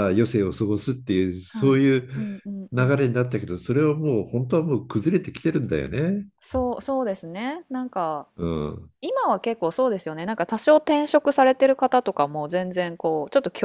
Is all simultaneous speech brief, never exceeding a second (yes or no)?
yes